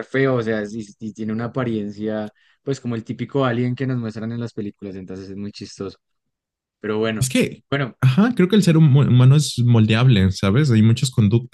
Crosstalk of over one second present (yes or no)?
no